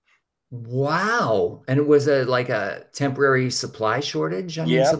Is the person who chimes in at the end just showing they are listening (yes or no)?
no